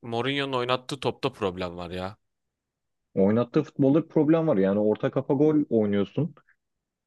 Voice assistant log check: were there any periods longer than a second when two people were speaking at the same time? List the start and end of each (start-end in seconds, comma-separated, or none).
none